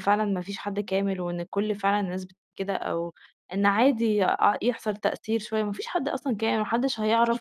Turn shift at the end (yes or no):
no